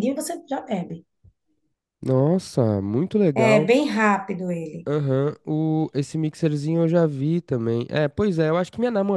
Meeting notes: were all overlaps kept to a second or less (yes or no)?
yes